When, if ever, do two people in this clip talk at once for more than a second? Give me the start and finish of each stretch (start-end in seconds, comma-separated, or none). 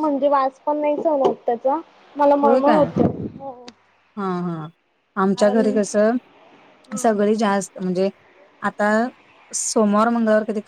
none